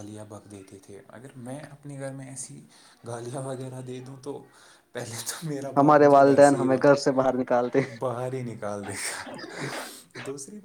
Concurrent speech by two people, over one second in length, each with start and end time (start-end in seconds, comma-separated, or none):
5.8-7.8